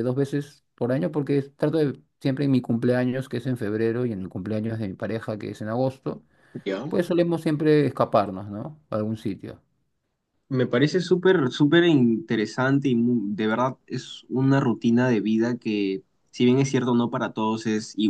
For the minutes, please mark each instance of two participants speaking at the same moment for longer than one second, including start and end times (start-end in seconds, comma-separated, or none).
none